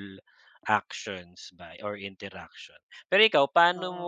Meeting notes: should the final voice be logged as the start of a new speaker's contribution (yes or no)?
no